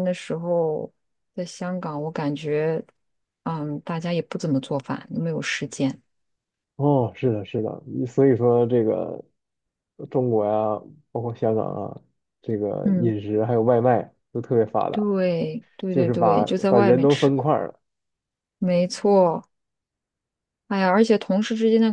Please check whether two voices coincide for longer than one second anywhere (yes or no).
yes